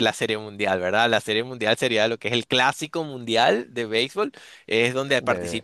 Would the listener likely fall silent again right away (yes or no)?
yes